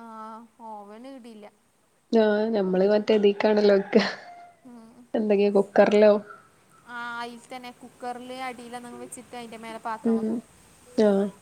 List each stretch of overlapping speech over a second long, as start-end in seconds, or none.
none